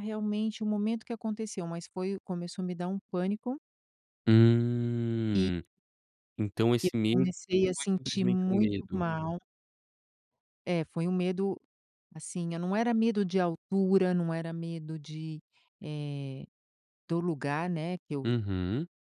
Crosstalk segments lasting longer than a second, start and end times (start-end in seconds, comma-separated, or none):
6.8-9.0